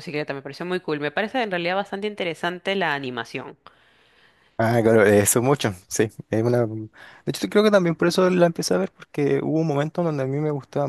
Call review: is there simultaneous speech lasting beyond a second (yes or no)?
no